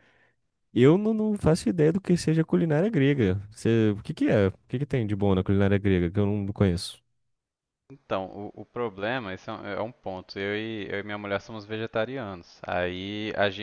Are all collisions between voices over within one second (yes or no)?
yes